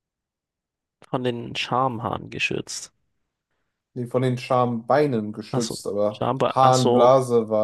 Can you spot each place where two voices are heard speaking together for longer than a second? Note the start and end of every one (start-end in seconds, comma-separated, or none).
5.5-7.1